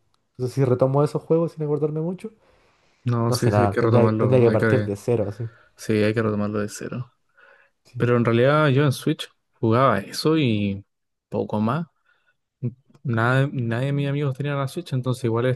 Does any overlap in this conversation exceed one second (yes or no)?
yes